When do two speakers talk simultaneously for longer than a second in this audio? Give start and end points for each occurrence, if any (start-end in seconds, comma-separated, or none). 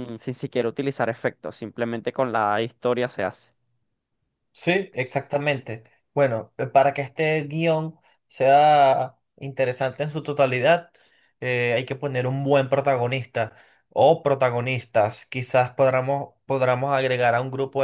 none